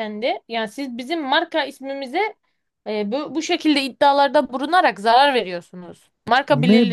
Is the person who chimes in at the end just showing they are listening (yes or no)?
no